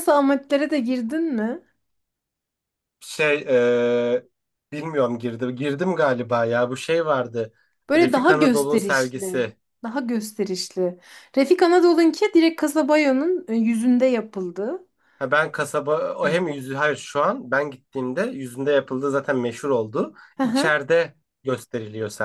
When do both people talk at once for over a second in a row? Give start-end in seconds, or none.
8.0-9.4